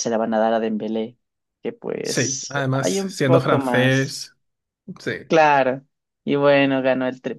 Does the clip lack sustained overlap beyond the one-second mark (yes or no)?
no